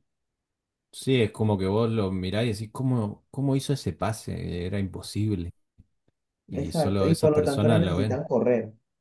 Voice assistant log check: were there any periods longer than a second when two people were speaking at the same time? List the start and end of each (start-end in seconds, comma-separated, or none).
6.5-8.2